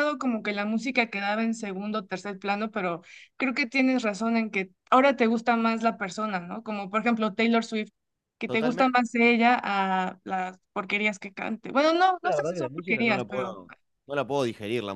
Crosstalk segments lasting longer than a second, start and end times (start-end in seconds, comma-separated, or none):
12.2-13.6